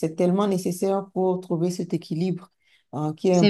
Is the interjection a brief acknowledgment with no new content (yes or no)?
yes